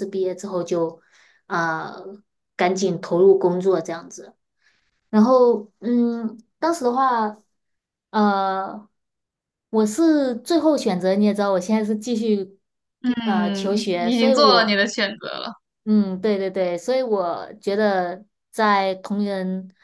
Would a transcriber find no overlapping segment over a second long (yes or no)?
no